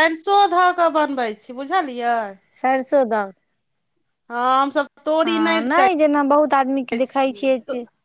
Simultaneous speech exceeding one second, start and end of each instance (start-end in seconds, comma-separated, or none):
none